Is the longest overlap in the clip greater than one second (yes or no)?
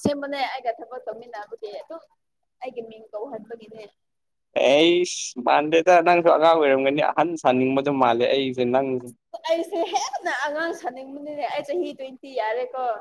no